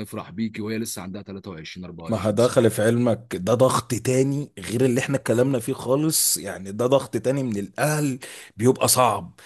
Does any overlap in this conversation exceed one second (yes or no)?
no